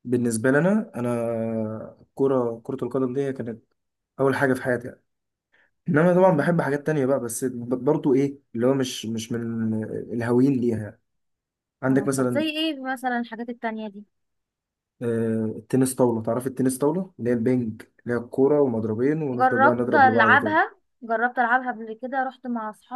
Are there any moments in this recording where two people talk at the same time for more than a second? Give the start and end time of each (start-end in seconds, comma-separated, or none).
19.3-20.5